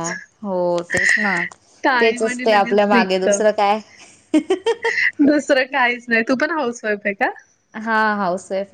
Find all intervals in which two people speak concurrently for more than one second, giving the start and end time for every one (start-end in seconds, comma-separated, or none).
2.0-3.3